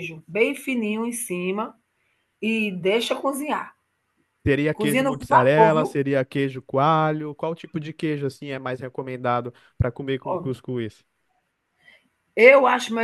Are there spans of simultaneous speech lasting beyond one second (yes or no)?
yes